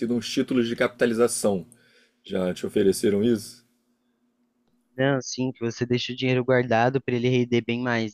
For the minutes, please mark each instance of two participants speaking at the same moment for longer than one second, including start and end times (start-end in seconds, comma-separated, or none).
none